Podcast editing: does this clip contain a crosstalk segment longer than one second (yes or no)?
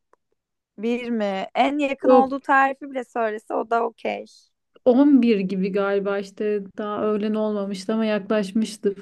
no